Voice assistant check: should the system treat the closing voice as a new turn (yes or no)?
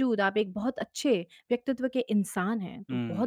yes